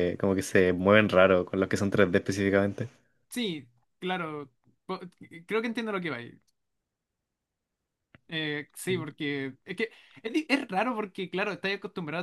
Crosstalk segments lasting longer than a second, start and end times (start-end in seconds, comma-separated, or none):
none